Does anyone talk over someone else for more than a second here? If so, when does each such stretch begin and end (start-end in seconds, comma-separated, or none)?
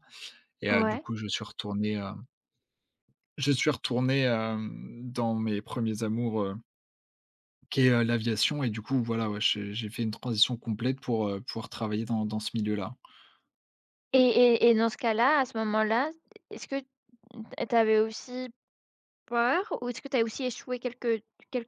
none